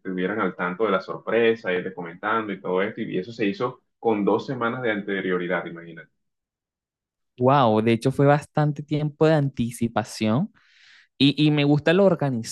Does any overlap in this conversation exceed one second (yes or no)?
no